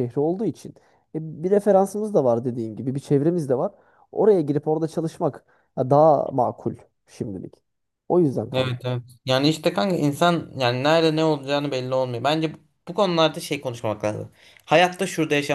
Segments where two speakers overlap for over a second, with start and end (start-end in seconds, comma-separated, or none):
none